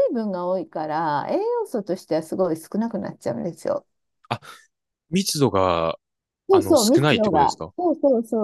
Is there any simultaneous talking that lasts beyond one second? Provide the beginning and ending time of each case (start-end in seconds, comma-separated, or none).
6.5-7.7